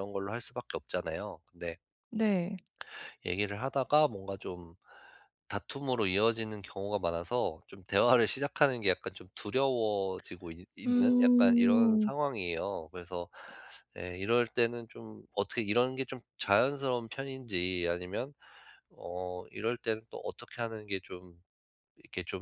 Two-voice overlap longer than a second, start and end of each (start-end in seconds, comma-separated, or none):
10.9-12.1